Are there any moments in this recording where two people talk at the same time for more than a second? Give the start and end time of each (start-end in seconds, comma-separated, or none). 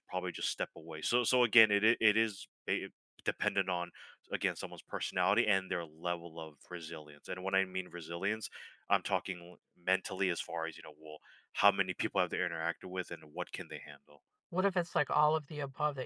none